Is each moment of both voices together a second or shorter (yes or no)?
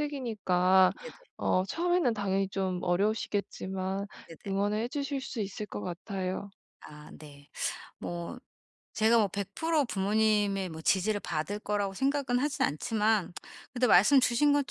yes